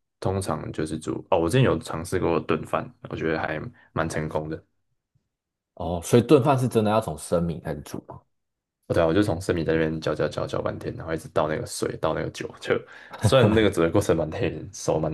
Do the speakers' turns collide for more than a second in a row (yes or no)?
no